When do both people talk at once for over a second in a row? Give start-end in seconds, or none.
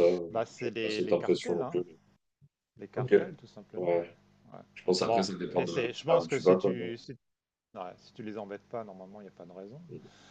0.6-1.8, 5.0-6.7